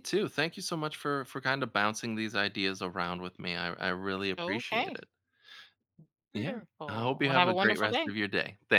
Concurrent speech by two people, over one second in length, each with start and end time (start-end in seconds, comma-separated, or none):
6.3-8.1